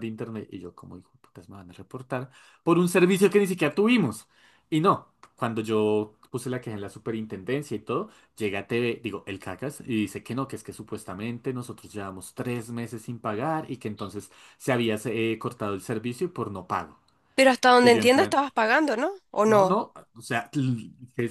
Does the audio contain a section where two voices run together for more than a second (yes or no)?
no